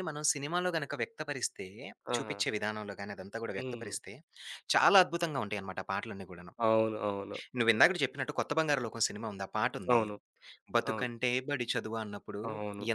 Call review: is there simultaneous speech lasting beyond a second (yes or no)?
no